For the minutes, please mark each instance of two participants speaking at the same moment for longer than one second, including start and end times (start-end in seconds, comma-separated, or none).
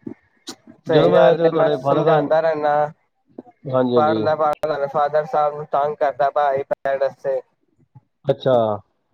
0.9-2.4